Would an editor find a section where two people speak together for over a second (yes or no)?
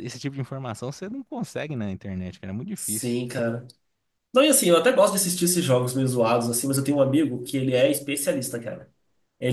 no